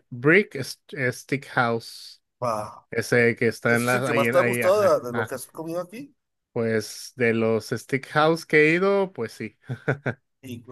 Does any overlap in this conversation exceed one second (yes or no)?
yes